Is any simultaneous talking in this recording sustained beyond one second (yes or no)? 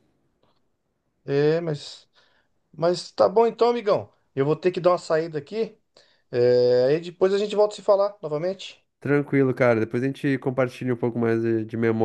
no